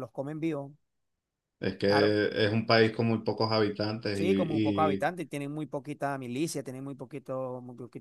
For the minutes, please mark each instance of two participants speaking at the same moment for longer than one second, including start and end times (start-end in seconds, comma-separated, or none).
none